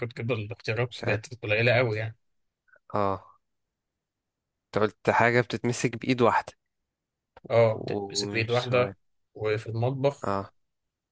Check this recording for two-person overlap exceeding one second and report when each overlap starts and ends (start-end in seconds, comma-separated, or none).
7.7-8.9